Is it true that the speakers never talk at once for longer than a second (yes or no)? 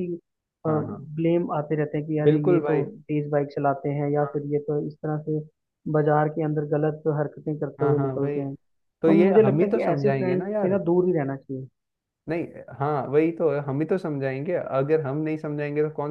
no